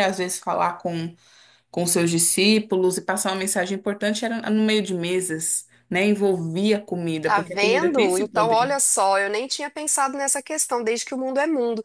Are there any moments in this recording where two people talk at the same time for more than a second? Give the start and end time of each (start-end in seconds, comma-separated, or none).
7.2-8.7